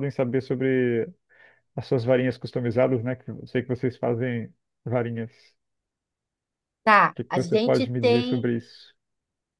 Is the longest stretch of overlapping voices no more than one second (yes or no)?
no